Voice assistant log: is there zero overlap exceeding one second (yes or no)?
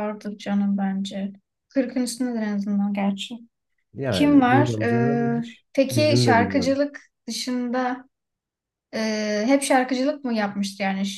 no